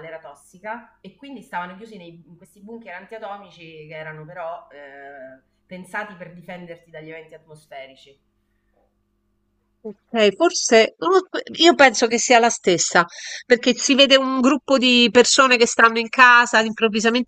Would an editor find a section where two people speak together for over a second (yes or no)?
no